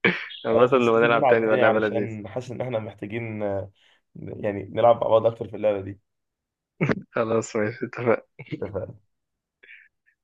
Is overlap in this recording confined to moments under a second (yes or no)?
no